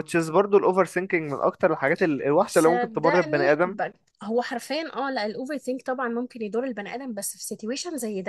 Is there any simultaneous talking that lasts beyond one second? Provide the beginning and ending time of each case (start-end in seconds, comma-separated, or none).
2.5-3.8